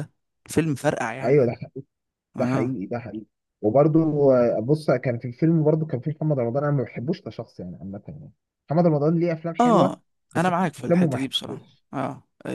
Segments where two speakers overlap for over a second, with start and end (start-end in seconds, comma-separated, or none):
9.6-11.8